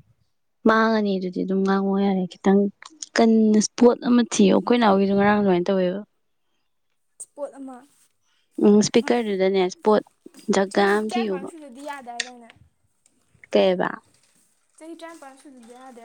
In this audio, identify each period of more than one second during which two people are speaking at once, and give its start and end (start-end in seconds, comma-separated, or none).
none